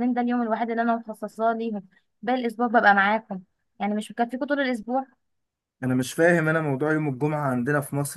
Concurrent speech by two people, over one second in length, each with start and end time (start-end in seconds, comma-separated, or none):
none